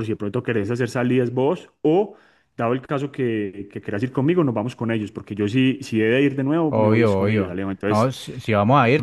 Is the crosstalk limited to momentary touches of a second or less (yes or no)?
no